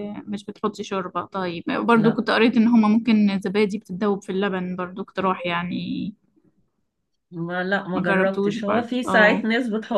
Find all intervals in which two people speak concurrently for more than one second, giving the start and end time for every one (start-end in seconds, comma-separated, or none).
7.9-9.4